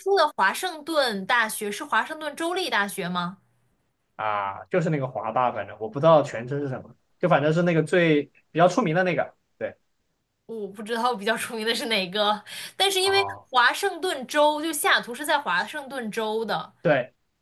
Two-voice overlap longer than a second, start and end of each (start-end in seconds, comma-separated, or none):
none